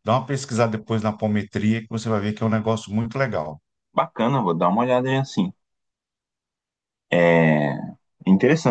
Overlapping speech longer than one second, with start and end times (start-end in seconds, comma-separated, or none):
none